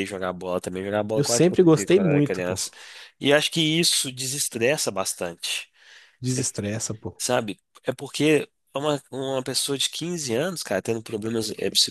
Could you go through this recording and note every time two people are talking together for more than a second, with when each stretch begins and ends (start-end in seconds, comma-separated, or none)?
1.1-2.6